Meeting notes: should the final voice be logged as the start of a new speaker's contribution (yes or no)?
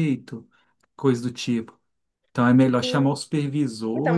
yes